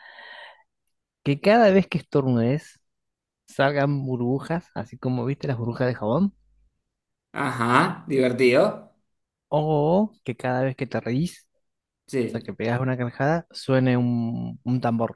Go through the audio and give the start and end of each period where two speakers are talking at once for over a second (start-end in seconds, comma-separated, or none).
none